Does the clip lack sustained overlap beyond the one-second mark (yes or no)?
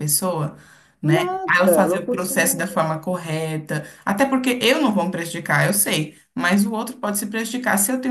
no